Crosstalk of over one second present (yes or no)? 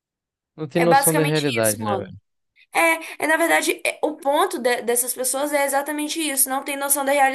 yes